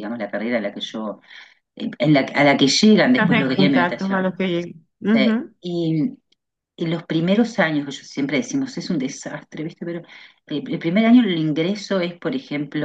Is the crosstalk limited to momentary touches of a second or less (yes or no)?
no